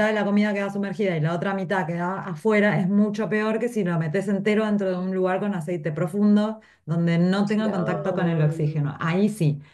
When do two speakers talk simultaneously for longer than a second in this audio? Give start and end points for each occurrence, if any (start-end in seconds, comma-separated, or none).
7.6-8.9